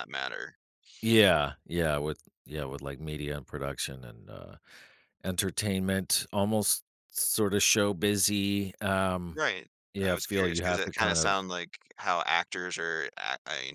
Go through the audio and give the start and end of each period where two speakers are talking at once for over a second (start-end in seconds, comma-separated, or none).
10.0-11.4